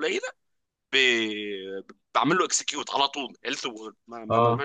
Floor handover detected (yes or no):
no